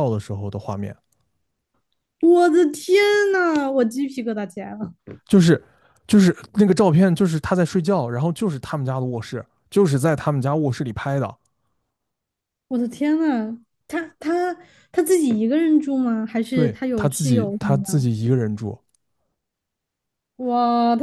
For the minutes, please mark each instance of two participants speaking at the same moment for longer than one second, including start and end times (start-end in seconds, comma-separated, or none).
16.5-18.1